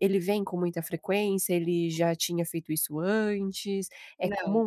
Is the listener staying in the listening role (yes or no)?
yes